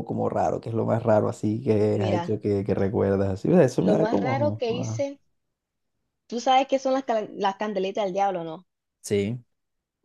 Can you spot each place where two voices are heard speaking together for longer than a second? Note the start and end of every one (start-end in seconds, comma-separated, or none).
3.8-5.0